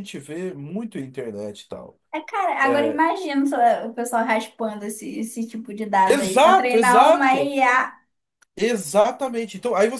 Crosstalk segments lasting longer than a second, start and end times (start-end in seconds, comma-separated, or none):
6.0-7.6